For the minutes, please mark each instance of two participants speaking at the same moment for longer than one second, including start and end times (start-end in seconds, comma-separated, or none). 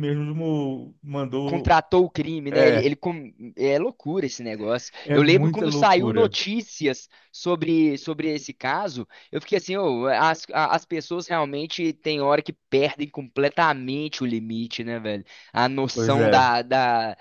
5.0-6.3